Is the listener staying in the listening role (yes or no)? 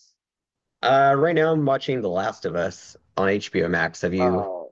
no